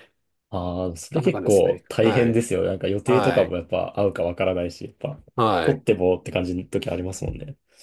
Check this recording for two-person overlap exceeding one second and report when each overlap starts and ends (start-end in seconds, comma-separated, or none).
1.1-2.4